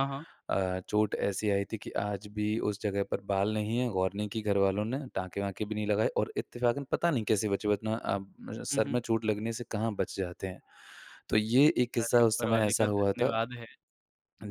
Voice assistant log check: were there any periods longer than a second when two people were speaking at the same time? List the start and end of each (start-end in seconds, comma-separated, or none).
12.0-13.4